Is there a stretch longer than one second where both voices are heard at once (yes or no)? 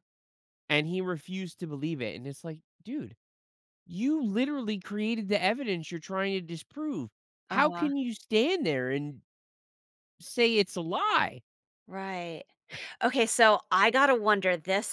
no